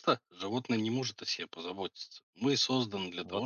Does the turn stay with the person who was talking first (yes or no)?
yes